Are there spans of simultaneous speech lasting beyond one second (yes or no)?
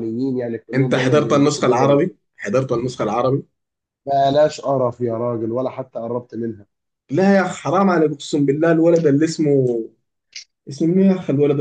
yes